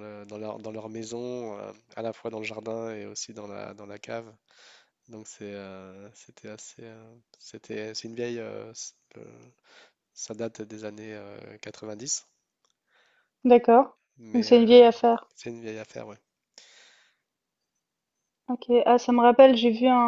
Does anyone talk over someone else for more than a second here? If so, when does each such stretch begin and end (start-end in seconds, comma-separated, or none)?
none